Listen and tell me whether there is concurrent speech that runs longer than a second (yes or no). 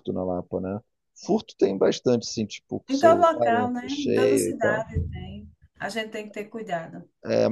yes